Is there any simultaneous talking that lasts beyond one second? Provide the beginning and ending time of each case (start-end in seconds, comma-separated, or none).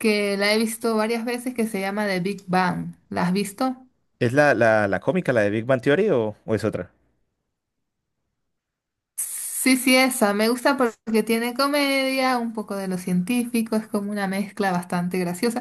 none